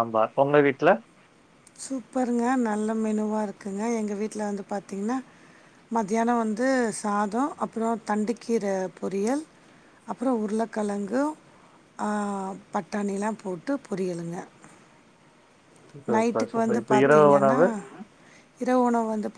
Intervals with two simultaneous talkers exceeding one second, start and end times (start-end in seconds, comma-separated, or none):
16.1-17.6